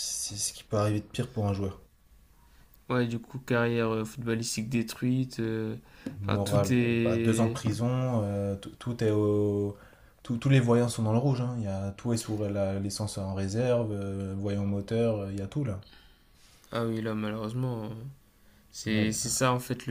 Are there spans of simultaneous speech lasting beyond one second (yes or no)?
yes